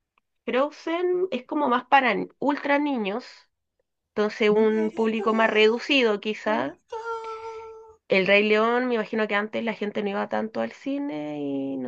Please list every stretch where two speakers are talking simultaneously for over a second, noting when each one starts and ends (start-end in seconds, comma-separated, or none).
4.5-6.8